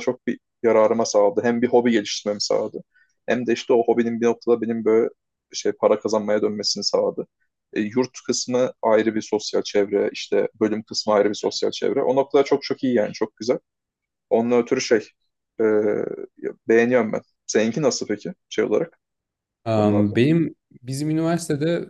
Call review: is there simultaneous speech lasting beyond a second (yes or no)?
no